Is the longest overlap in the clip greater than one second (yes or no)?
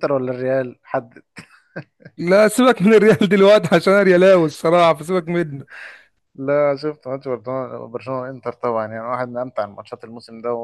no